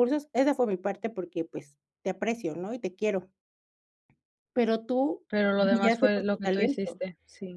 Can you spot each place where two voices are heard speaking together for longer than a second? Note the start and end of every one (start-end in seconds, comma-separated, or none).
5.6-7.0